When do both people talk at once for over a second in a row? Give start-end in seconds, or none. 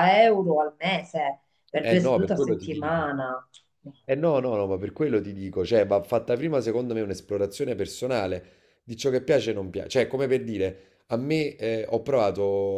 1.8-3.1